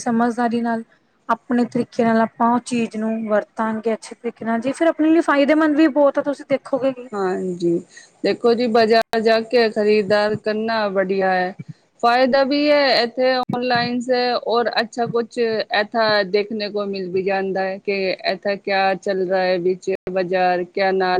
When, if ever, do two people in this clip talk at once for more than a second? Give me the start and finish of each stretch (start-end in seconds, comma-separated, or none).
none